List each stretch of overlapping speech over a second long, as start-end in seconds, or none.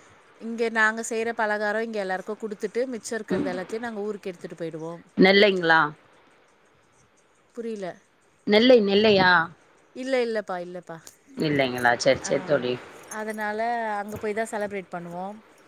none